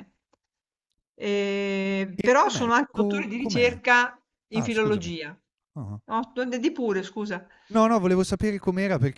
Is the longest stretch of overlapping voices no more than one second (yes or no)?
no